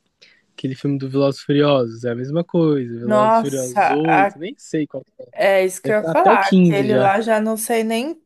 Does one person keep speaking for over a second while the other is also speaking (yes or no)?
yes